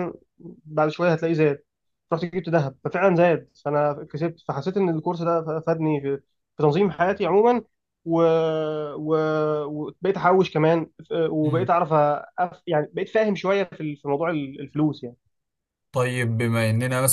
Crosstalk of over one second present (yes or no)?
no